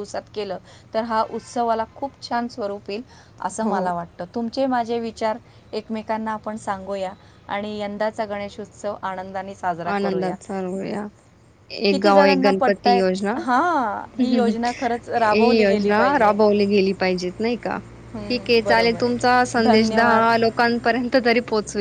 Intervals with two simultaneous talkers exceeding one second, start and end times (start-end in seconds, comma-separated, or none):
11.9-13.3, 14.2-16.3, 18.3-20.2